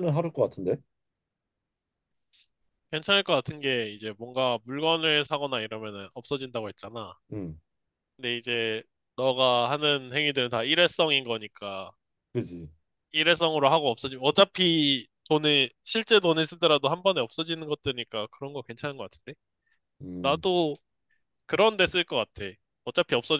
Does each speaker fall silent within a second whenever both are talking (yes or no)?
yes